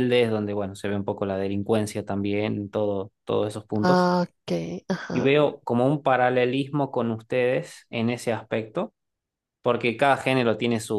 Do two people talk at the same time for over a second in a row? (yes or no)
no